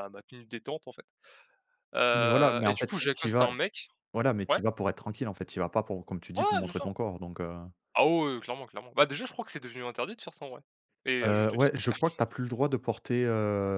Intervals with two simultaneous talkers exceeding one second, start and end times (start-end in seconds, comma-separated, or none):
2.1-3.5